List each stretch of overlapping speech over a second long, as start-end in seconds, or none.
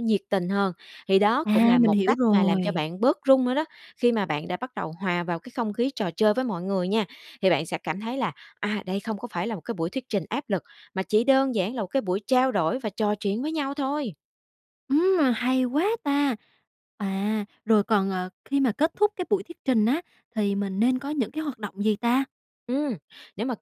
1.4-2.8